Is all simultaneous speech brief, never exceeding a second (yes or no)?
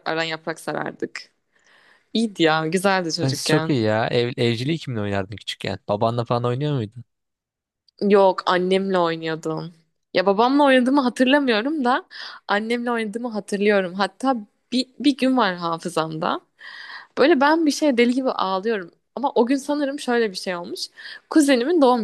yes